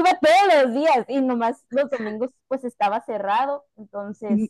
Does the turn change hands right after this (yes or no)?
yes